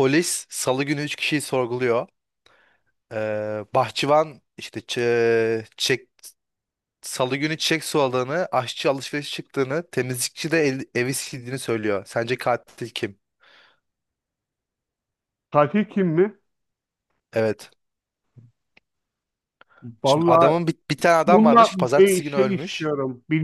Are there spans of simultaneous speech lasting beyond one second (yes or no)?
yes